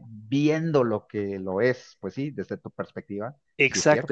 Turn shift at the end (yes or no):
yes